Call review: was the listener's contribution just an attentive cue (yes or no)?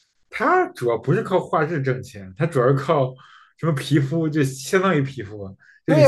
no